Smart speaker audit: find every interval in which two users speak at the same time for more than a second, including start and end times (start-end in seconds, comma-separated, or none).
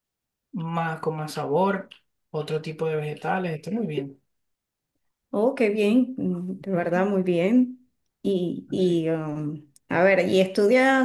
none